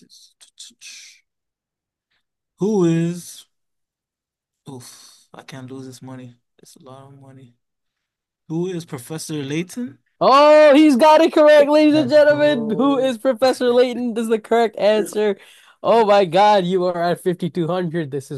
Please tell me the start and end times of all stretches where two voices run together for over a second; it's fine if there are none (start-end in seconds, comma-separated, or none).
11.9-13.1